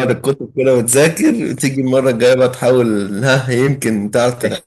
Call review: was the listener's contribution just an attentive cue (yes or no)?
no